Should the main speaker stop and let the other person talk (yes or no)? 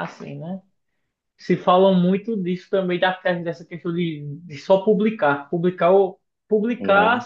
no